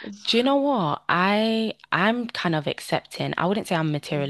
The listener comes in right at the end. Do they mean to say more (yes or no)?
no